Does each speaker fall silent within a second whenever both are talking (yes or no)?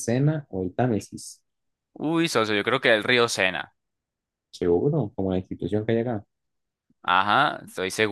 yes